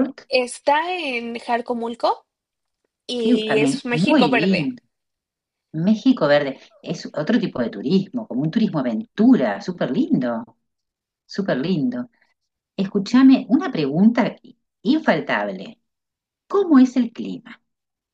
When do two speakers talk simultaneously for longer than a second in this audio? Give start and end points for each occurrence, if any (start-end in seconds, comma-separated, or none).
3.2-4.8